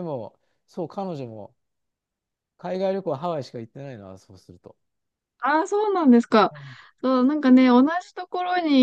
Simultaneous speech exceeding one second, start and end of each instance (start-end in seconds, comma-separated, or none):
none